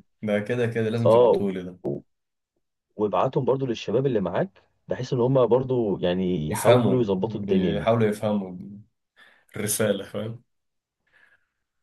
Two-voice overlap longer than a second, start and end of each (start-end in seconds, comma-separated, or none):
6.5-7.9